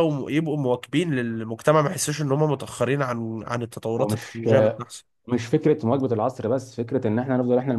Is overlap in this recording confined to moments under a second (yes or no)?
yes